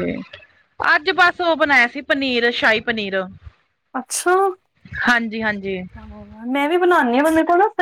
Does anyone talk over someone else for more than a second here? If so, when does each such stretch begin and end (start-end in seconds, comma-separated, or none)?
none